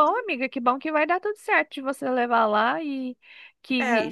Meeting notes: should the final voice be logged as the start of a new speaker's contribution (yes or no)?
no